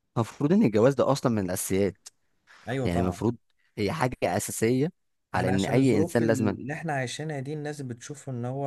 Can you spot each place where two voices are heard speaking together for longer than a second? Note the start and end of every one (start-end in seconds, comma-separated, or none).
5.3-6.6